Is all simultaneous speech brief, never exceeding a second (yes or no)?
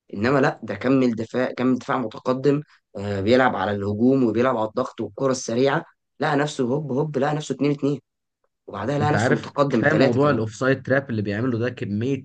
no